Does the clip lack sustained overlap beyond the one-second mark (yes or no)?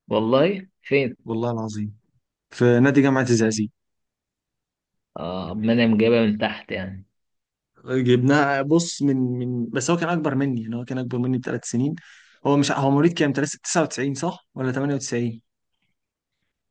yes